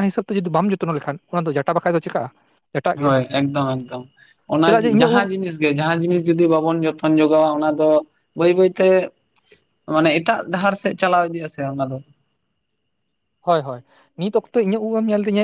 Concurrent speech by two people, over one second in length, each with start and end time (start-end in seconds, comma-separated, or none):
none